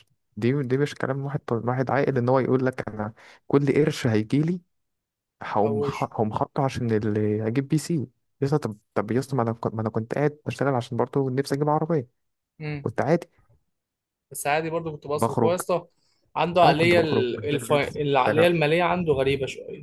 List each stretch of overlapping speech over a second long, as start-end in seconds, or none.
16.6-18.5